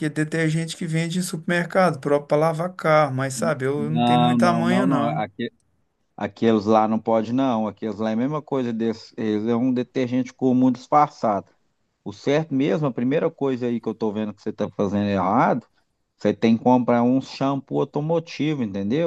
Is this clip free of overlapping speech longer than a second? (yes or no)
no